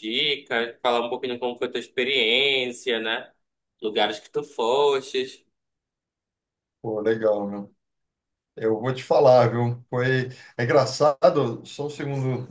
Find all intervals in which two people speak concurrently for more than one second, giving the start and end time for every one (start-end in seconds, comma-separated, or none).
none